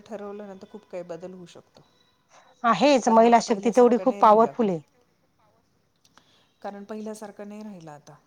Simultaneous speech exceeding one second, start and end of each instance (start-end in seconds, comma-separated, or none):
3.0-4.5